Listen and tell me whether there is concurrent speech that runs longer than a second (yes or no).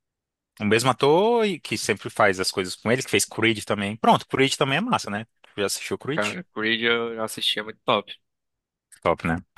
no